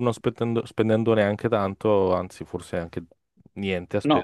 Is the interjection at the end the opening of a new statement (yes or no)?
yes